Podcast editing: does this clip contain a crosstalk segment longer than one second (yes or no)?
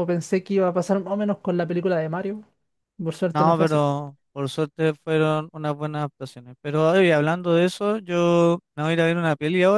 no